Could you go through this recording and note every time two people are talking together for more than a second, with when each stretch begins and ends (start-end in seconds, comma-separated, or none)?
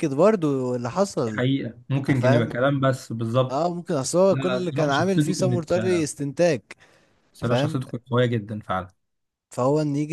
4.3-5.7